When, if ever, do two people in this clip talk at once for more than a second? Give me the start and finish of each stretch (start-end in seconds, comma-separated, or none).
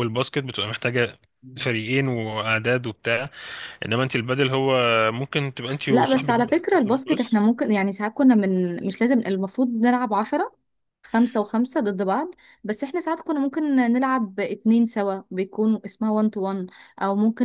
5.9-7.4